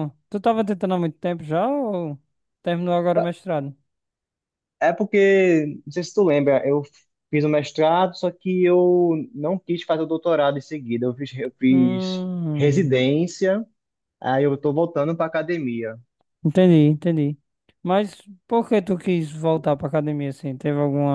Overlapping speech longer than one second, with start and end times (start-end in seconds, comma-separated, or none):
11.7-13.0